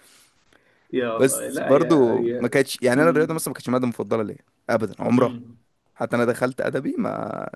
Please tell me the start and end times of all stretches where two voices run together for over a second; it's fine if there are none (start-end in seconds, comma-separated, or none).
1.1-2.5